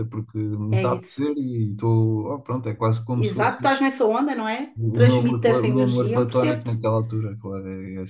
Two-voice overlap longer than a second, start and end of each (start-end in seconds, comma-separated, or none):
4.8-6.7